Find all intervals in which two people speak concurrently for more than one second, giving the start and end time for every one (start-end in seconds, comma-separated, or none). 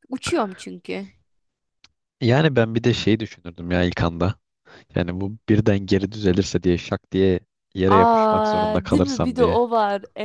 7.9-9.6